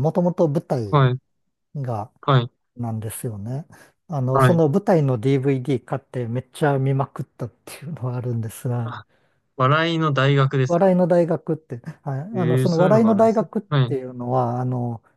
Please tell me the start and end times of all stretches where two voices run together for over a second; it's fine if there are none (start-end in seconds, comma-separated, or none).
12.3-13.9